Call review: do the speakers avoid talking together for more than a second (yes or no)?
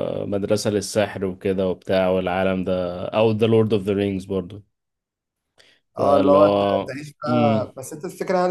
no